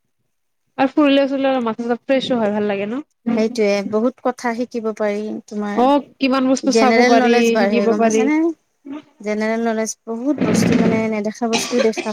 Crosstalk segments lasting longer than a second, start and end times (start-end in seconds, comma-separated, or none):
5.8-8.2